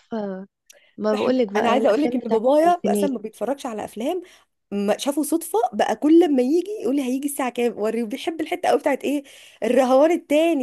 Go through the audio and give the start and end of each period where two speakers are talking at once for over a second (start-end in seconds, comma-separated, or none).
1.1-3.1